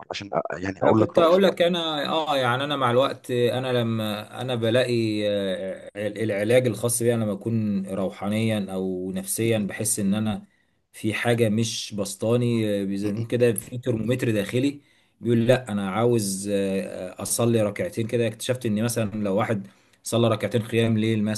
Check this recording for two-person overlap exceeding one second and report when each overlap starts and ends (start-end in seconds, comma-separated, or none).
none